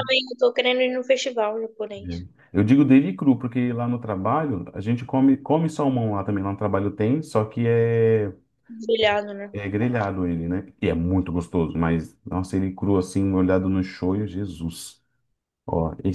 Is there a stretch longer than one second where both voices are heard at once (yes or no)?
no